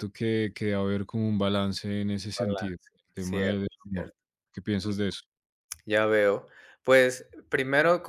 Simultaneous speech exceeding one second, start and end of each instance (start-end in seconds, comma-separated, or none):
2.3-4.1